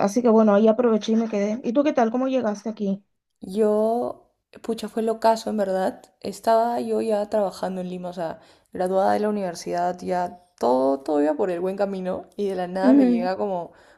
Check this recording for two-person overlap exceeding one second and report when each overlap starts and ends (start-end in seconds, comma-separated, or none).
none